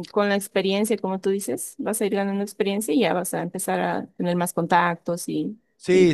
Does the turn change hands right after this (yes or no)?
yes